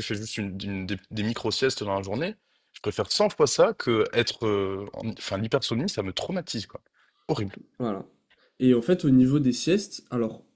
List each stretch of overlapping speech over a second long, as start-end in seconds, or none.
none